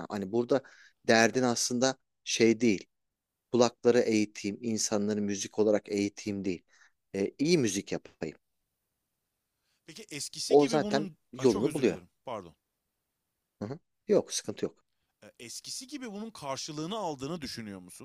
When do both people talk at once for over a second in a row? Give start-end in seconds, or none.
10.5-12.0